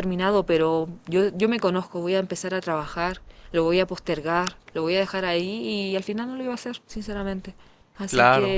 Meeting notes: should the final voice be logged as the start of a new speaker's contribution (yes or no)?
no